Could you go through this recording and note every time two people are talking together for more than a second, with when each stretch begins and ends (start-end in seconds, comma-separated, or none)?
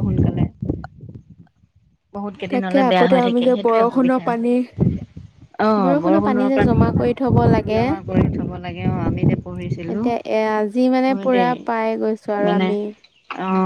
2.5-4.2